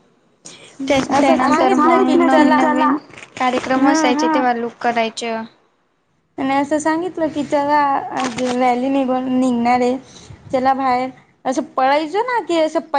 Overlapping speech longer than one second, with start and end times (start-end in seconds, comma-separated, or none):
1.2-2.6